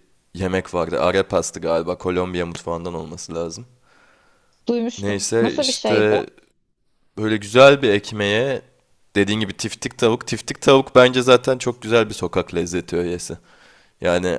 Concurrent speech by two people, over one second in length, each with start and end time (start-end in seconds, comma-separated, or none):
5.0-6.2